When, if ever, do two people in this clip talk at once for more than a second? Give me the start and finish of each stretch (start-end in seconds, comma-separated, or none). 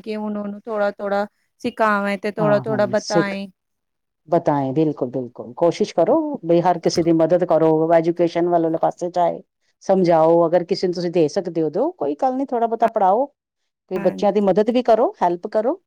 none